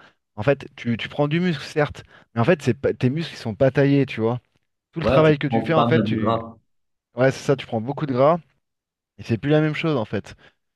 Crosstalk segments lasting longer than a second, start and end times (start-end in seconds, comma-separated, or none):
5.0-6.4